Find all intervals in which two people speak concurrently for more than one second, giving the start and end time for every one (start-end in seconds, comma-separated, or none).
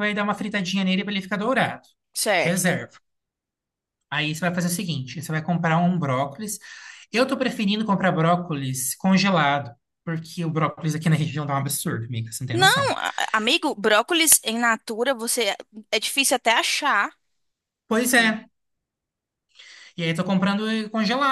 none